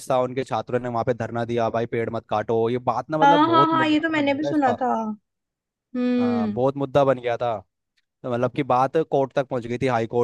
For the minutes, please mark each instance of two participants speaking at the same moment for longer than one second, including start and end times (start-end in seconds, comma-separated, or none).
3.2-4.8